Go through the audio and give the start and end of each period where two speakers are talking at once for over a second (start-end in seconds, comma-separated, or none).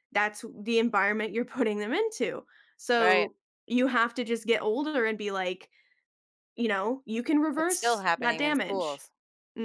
7.6-9.0